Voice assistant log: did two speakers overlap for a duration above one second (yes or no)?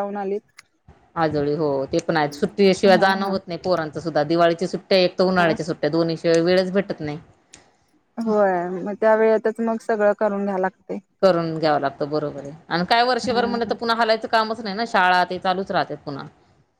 no